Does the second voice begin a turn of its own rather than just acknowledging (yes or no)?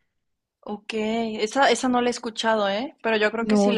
no